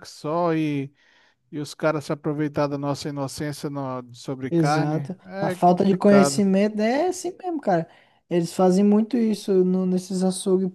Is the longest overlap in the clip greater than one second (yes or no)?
yes